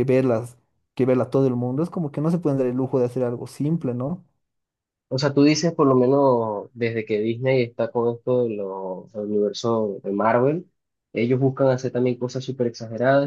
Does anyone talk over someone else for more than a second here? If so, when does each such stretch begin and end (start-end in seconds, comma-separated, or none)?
none